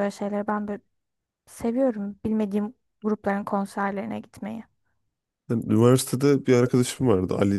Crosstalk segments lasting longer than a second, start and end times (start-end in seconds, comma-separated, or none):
none